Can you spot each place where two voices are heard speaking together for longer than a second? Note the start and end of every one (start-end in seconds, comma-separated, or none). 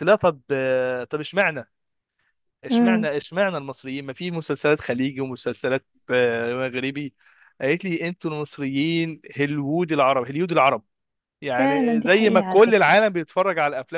11.6-12.9